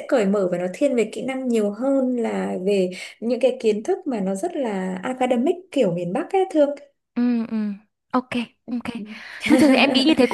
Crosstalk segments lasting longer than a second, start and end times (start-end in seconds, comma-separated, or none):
none